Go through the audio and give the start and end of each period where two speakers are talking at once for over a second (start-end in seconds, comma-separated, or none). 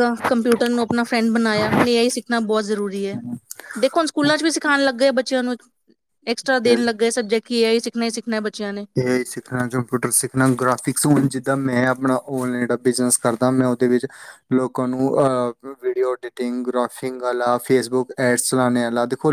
none